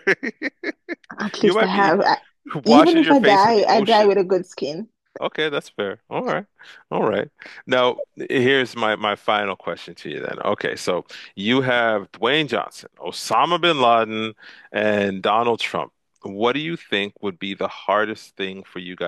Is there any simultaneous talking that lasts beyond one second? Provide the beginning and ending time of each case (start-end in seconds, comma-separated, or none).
2.7-4.1